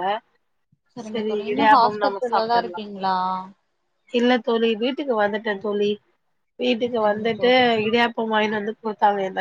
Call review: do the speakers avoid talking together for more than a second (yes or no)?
no